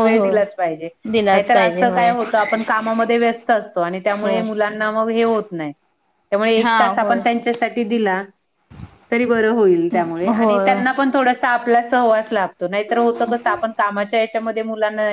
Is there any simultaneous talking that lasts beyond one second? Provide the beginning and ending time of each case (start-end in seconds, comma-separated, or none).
none